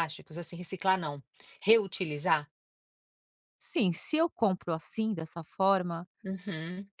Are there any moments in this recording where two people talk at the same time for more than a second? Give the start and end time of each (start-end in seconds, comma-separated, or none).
none